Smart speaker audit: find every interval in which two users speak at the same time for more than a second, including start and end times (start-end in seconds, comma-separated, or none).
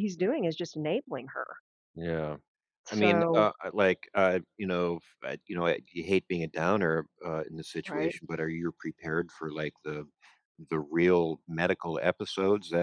none